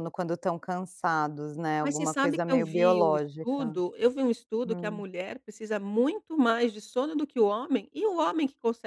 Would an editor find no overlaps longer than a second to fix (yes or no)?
no